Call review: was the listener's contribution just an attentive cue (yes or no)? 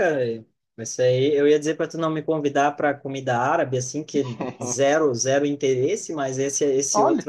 yes